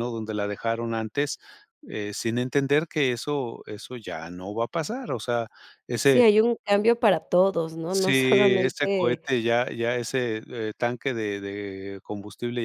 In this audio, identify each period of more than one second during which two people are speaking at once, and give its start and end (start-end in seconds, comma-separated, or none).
7.9-9.2